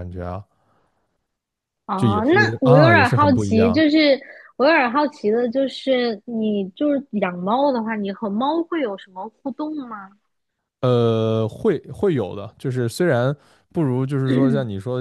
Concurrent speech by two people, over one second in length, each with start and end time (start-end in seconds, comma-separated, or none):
2.0-3.8